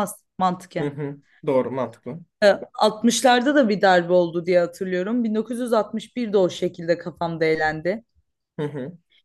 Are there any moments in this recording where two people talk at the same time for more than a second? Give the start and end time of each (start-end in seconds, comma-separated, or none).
none